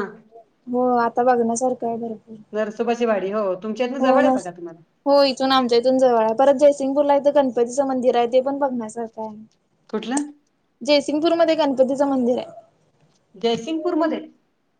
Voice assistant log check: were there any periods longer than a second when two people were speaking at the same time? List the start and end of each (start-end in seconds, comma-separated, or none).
none